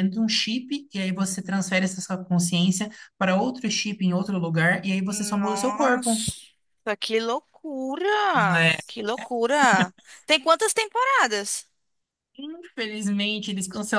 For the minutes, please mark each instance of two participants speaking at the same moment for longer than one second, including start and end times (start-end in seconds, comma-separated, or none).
5.0-6.3